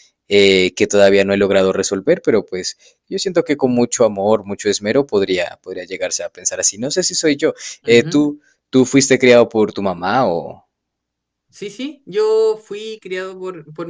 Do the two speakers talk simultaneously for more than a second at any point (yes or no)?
no